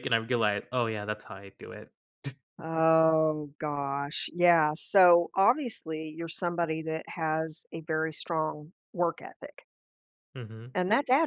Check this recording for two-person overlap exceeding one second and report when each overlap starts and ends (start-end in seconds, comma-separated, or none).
none